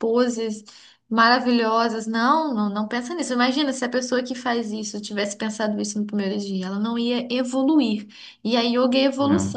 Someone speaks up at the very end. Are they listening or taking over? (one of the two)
listening